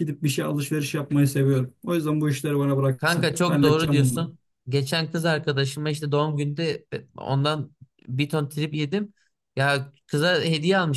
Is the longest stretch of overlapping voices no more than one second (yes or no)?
no